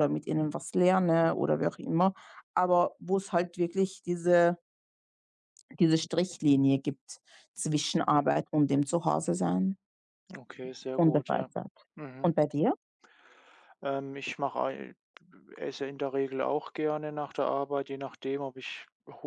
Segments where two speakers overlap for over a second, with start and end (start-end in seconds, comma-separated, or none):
none